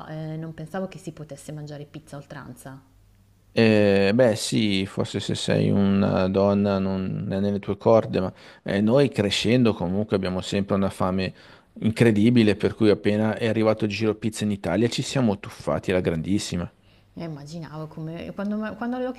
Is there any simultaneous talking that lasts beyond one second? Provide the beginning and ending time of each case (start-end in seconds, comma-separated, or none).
none